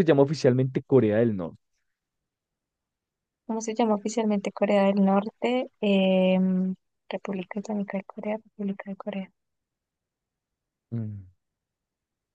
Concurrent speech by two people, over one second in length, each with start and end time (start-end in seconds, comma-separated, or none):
none